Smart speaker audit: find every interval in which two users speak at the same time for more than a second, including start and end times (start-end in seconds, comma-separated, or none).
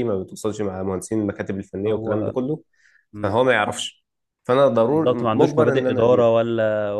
4.9-6.3